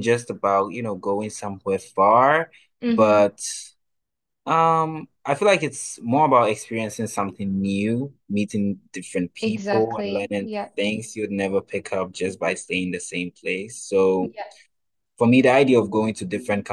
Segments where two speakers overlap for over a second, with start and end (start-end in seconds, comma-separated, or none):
9.4-10.7